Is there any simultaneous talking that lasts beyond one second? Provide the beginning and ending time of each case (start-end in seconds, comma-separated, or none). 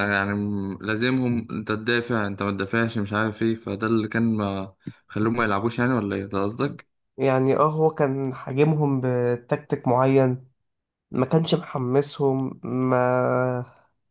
none